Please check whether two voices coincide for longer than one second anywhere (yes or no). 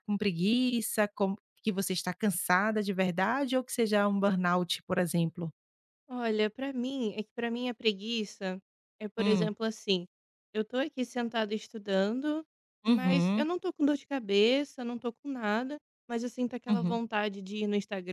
no